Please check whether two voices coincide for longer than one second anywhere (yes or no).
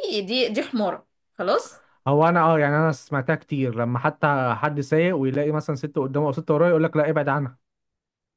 no